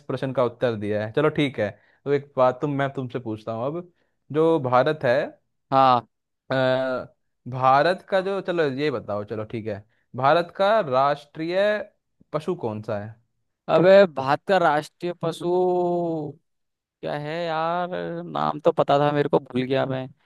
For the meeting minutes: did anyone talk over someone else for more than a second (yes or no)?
no